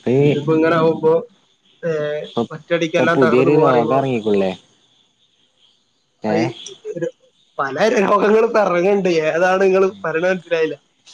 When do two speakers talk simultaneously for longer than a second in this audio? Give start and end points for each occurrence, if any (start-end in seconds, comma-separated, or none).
2.5-4.0